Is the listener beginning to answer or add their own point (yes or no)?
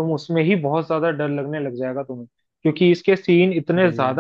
no